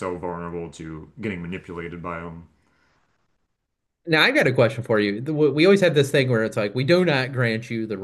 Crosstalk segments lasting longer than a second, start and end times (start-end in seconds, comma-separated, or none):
none